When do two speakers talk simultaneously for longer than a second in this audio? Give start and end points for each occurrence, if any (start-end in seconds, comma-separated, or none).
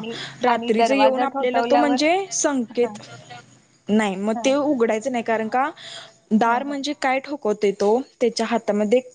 0.5-2.0